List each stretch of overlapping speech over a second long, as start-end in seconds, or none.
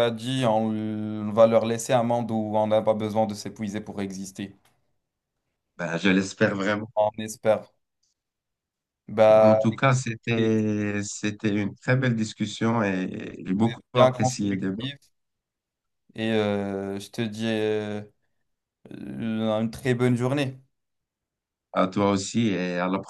13.6-14.8